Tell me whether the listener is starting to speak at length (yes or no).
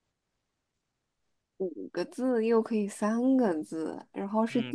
yes